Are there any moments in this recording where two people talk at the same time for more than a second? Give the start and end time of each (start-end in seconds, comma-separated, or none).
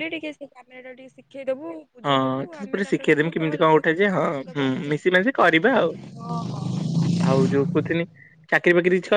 2.0-5.0